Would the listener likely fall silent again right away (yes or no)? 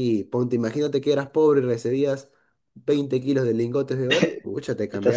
no